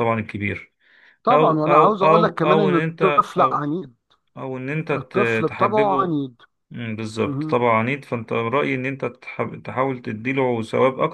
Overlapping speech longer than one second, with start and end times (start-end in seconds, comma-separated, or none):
1.3-3.7, 5.0-6.2